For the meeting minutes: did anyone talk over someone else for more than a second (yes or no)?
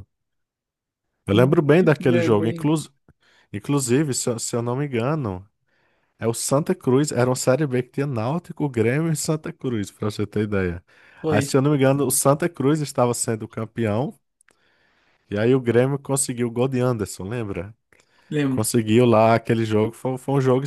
yes